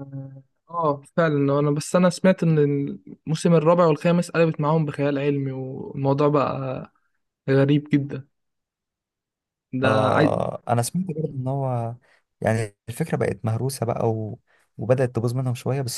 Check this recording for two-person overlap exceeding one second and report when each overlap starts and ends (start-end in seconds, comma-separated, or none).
none